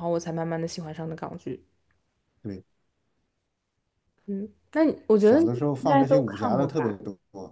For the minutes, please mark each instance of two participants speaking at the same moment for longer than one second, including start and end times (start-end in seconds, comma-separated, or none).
5.2-7.0